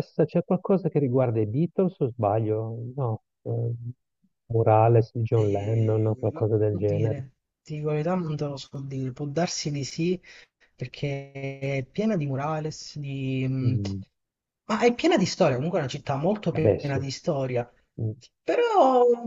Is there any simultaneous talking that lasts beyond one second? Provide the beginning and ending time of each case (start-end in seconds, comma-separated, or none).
5.3-7.2